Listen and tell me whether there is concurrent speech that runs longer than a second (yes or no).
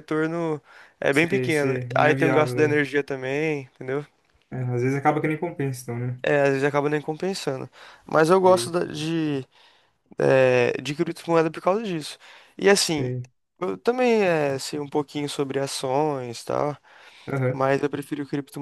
yes